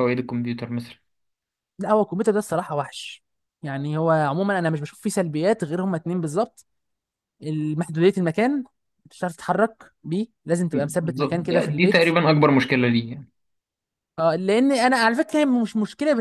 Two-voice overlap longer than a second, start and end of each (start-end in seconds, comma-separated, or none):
10.7-12.0